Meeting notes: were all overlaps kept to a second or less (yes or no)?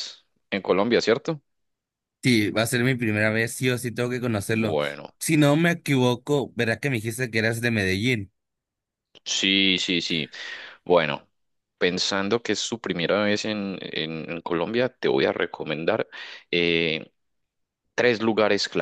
yes